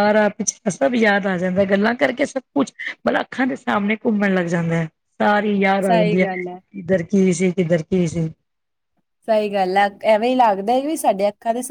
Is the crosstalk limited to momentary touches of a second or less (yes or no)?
yes